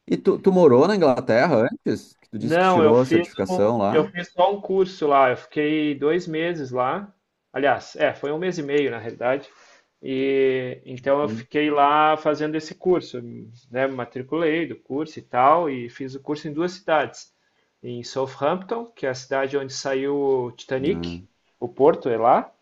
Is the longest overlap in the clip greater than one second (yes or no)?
yes